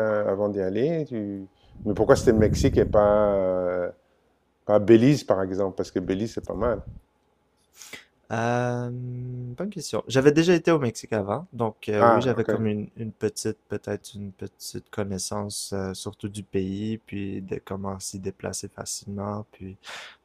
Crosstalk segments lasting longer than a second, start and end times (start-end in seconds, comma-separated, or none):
none